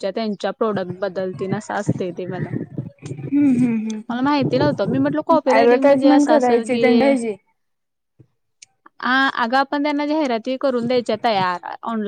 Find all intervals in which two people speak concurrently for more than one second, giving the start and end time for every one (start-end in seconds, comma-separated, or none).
5.6-7.1